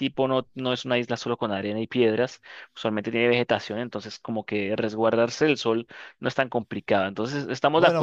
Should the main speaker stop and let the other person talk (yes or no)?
yes